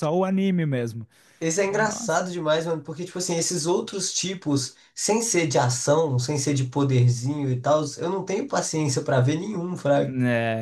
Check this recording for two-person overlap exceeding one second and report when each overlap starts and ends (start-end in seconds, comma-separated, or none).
none